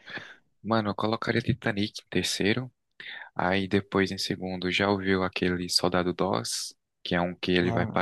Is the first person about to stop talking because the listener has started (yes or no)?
no